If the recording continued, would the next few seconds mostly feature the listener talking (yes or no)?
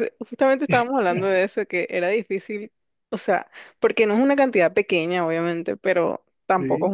no